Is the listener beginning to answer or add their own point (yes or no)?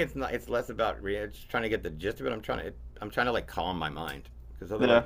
no